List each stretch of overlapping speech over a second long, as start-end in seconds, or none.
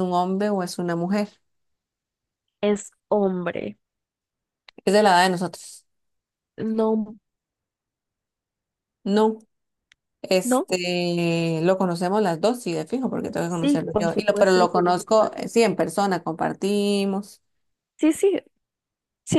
13.4-15.5